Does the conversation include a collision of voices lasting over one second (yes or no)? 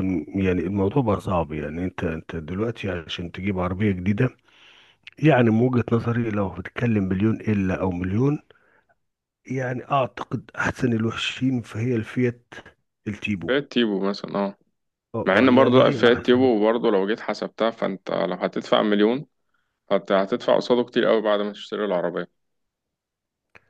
yes